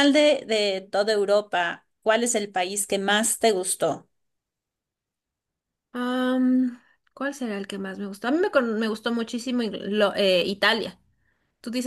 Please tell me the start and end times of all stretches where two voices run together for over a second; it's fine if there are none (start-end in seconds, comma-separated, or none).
none